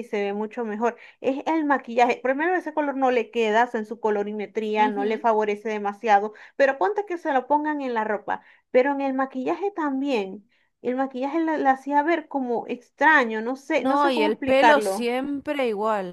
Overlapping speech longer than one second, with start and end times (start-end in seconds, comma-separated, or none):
13.8-15.1